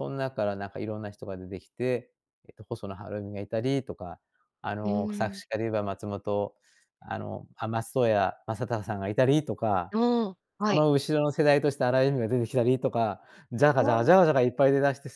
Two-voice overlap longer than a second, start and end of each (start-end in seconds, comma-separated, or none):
none